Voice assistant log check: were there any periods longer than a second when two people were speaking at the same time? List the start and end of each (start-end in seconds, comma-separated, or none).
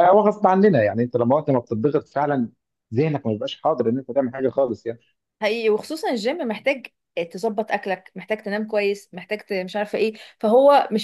none